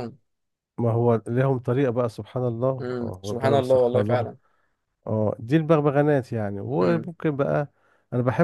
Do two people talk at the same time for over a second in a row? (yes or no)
yes